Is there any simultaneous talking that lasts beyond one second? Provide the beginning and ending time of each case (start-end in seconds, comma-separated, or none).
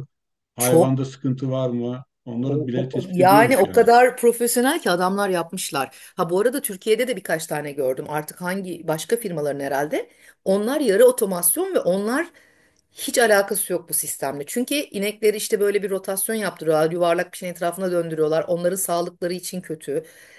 2.4-3.9